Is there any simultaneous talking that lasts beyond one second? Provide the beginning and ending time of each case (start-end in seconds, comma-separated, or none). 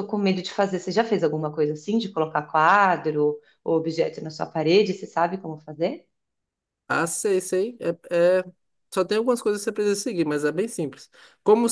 none